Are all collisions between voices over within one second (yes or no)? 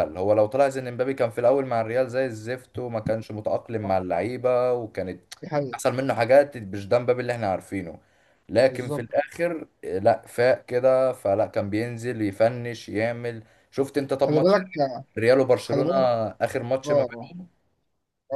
yes